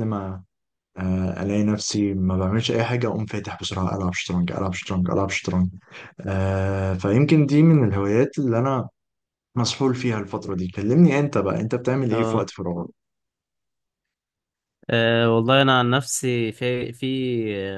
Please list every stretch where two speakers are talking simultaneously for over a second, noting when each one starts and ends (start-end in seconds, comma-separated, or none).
none